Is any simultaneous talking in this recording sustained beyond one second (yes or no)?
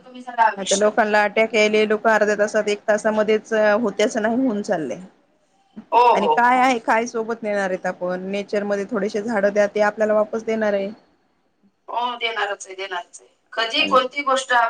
no